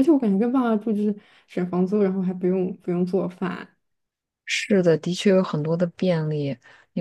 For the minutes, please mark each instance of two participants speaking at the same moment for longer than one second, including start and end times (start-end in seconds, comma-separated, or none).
none